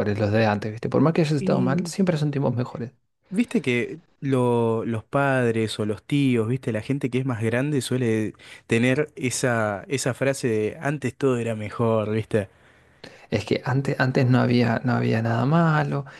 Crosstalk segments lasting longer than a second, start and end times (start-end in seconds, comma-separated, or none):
none